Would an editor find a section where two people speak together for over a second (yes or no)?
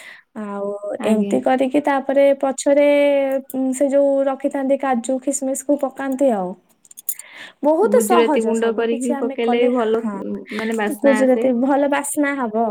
yes